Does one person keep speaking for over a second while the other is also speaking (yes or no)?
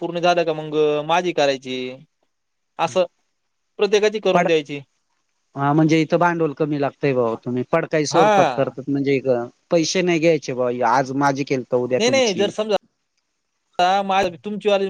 no